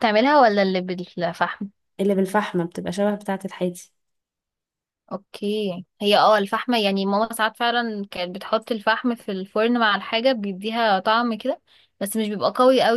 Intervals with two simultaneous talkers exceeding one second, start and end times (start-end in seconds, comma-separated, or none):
none